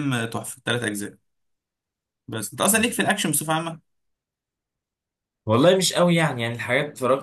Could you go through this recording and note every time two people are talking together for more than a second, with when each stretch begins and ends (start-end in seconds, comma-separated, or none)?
none